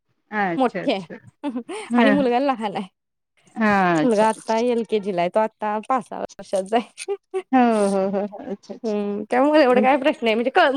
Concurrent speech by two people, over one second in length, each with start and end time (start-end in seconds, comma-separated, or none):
none